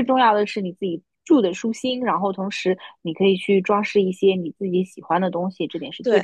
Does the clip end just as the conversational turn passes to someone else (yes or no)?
yes